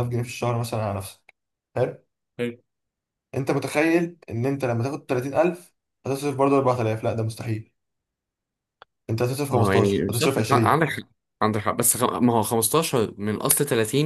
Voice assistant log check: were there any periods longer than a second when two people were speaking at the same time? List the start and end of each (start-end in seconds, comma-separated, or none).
9.5-10.8